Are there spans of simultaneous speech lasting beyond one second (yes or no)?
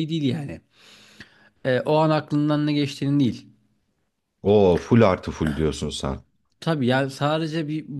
no